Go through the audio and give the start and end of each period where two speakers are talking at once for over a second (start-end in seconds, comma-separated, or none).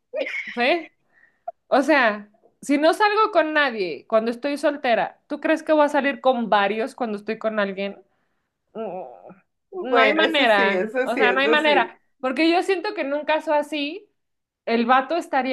9.8-11.9